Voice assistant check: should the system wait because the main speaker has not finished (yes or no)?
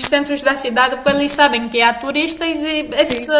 yes